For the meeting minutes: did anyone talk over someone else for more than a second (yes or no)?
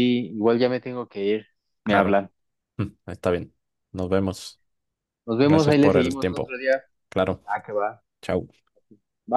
yes